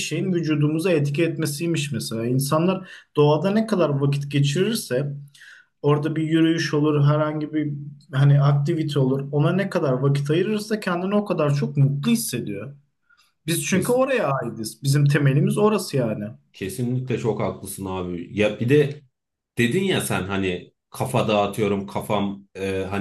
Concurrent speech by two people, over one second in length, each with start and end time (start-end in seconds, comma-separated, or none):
none